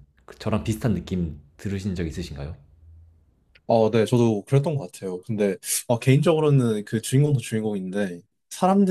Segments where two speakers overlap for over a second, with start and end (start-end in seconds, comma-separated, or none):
none